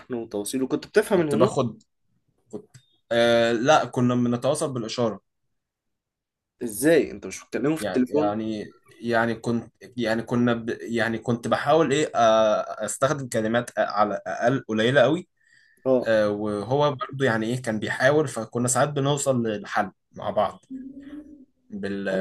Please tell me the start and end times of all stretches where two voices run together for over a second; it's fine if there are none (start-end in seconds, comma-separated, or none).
none